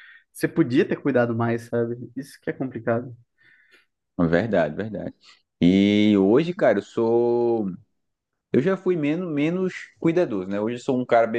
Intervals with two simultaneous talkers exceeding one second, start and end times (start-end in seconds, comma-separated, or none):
none